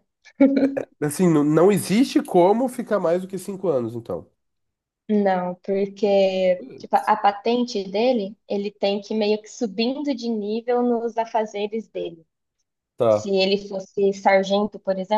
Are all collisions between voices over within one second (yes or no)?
yes